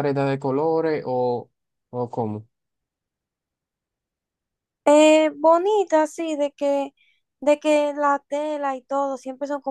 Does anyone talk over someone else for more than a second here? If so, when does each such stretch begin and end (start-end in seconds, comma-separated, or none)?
none